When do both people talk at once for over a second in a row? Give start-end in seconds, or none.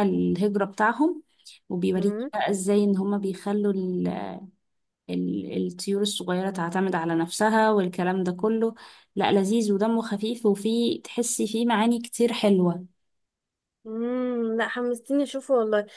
none